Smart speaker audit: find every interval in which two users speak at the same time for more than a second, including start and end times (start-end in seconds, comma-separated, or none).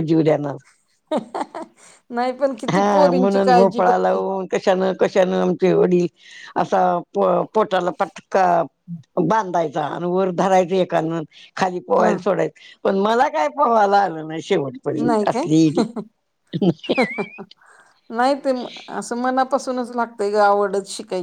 2.7-4.2